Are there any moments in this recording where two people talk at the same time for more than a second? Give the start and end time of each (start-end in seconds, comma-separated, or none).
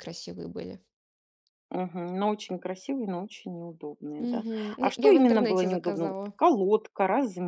4.2-6.3